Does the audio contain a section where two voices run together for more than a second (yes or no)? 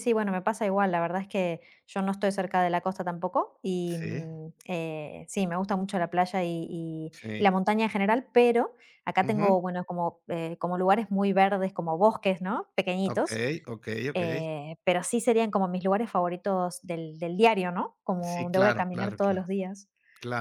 yes